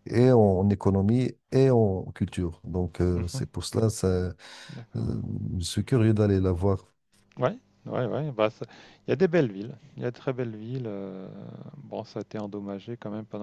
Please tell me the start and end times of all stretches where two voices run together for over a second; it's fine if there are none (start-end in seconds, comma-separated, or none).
none